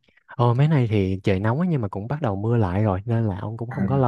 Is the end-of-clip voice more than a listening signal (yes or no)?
no